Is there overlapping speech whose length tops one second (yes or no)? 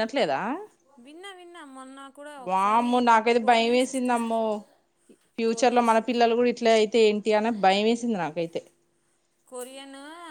yes